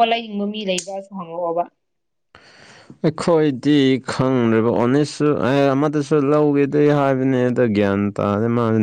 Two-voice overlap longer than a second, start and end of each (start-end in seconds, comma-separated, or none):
none